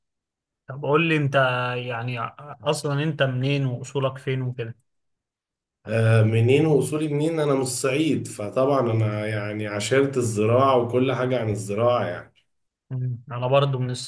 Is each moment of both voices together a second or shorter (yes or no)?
yes